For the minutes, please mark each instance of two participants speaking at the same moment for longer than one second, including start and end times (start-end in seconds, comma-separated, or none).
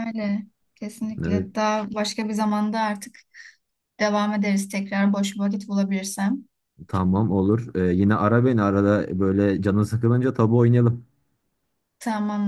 none